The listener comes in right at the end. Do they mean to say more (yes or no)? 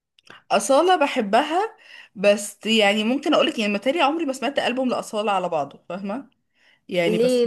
yes